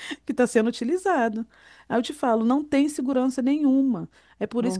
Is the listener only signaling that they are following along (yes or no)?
yes